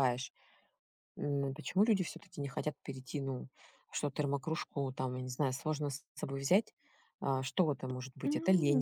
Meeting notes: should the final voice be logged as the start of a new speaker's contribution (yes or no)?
no